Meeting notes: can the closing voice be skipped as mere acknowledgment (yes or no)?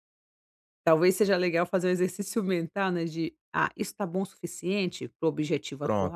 no